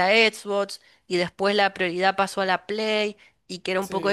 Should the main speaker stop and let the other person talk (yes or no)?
no